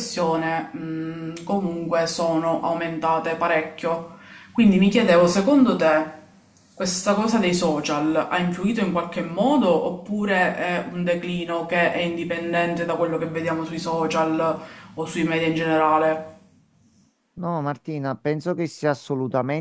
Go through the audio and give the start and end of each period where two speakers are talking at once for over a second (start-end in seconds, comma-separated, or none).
none